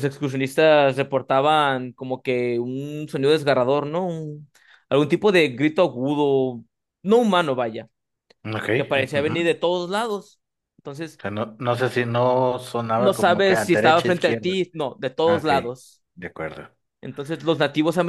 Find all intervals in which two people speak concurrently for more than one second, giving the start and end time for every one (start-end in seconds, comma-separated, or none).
12.8-14.5